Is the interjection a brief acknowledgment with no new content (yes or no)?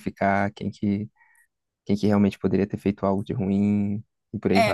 no